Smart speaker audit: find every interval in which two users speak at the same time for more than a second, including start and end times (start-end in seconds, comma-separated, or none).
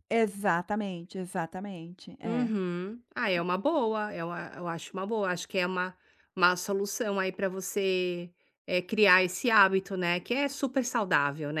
none